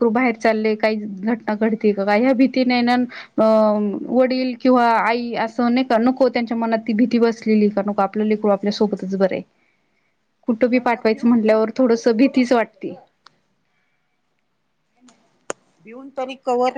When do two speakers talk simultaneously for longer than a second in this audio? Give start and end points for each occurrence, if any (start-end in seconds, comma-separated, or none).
10.7-12.9